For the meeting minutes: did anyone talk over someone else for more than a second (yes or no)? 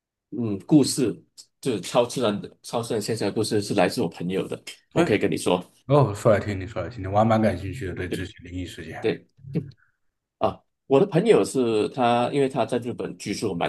no